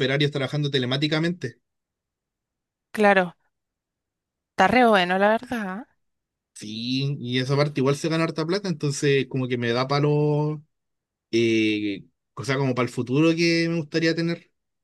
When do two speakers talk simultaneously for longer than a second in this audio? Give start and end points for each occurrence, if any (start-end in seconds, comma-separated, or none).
none